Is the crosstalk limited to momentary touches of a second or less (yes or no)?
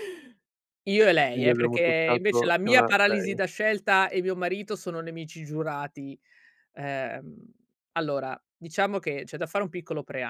no